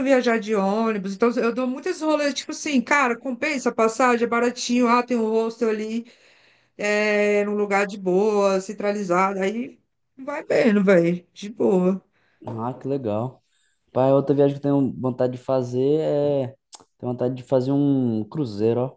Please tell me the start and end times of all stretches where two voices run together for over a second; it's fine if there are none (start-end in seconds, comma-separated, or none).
none